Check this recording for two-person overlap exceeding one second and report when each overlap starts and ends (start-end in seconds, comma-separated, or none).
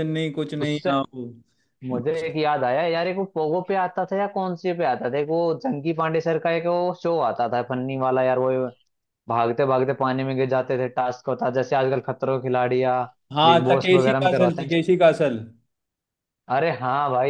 13.4-14.7